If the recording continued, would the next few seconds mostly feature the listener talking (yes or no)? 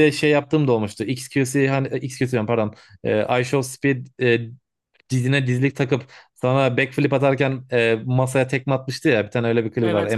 yes